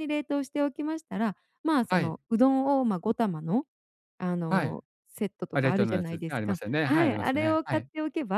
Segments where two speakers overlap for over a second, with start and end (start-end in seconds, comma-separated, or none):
5.5-7.9